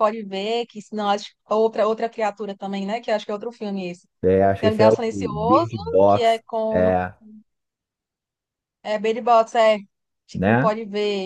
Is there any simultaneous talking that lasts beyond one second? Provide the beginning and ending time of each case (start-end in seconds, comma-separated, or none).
4.6-6.9